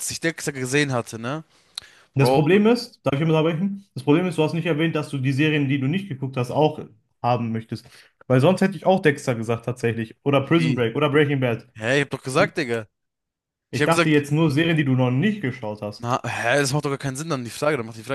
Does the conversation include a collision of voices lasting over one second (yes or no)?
no